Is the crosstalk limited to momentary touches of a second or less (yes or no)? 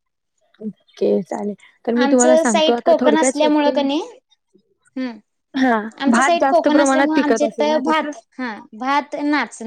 no